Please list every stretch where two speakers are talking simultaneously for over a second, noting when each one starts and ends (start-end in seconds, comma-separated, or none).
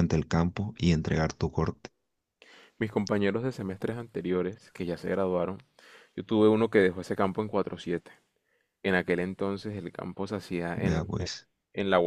none